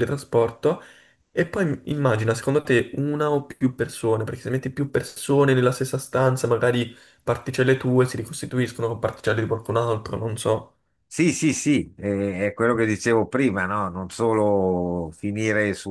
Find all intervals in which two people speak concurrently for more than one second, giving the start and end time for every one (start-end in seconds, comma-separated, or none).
none